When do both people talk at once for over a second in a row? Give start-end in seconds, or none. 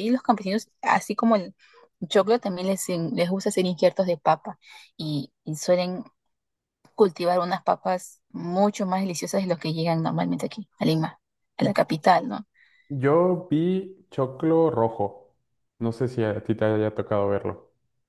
none